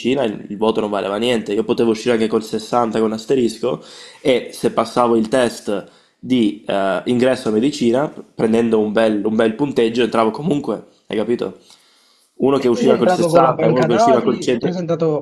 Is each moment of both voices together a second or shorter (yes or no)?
no